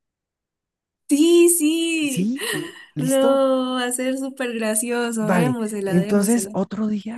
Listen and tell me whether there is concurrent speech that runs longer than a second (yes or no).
yes